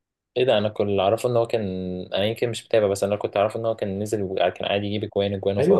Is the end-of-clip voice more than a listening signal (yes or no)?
yes